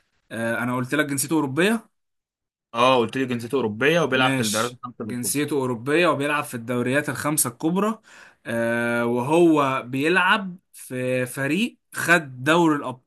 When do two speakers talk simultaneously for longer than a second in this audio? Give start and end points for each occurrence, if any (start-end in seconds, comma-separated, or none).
4.1-5.3